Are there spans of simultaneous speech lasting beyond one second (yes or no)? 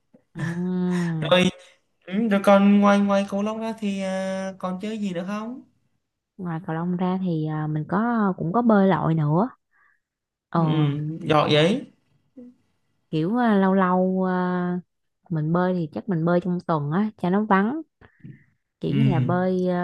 no